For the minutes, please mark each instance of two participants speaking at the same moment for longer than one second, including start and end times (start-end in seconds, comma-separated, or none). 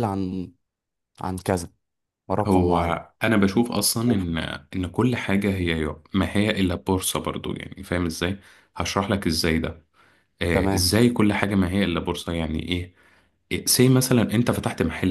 none